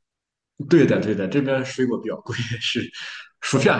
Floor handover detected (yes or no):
no